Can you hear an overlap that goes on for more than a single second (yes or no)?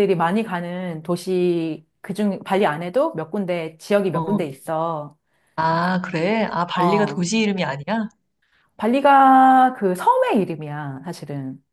no